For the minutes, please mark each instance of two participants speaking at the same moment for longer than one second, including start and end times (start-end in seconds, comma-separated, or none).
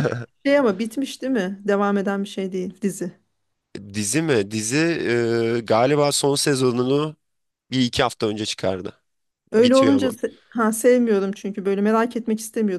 none